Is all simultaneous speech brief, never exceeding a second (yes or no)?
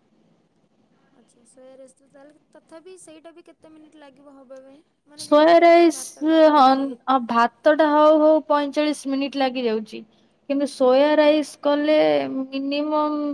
no